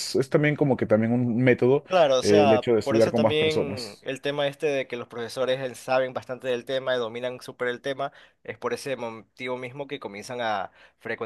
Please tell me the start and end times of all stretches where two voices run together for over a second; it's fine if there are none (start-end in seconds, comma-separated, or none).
2.2-4.1